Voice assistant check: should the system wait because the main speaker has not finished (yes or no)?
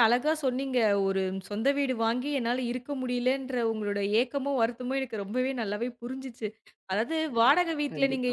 yes